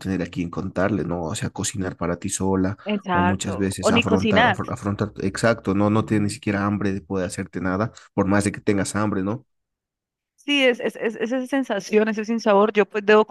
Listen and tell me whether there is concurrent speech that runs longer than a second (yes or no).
yes